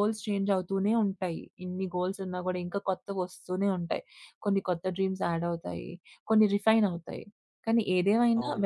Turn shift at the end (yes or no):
no